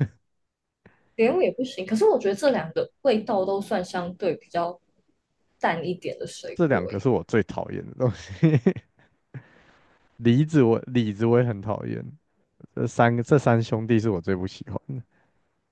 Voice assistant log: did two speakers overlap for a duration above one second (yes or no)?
no